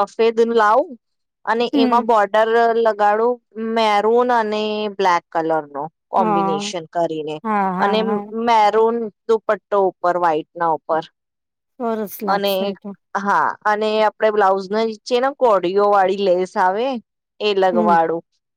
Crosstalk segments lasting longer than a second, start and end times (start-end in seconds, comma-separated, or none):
none